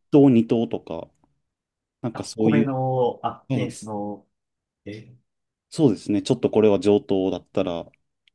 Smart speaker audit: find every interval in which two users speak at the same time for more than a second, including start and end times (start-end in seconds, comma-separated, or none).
none